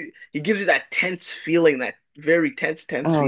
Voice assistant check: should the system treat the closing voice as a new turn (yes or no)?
yes